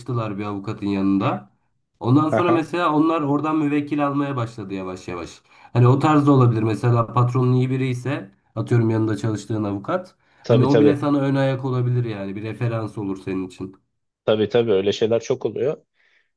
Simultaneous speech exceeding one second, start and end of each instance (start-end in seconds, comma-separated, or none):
none